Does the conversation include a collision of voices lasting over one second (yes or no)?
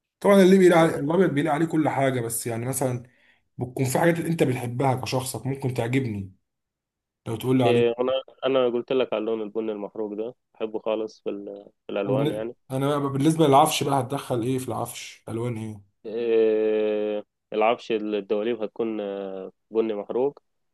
no